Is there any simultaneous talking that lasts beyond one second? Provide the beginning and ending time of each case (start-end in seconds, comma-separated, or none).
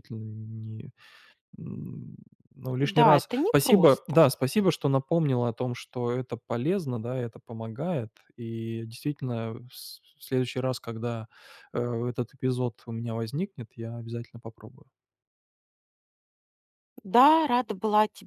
2.8-4.3